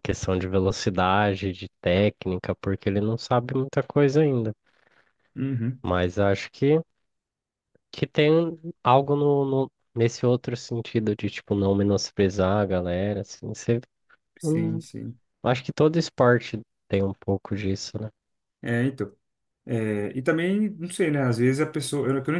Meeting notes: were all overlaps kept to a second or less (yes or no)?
yes